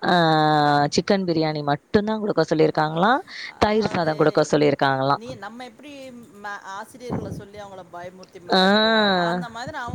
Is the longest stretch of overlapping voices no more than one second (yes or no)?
yes